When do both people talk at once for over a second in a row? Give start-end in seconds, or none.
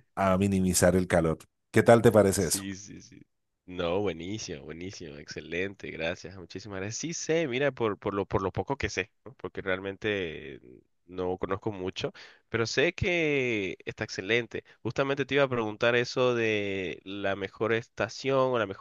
none